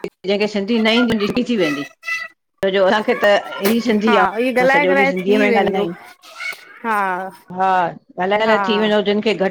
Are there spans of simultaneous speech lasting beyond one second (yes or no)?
yes